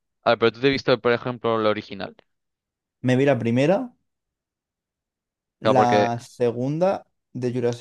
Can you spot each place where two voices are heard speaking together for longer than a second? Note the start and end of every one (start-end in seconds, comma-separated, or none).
none